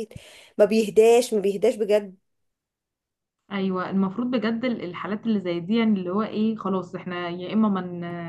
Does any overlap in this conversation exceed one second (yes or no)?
no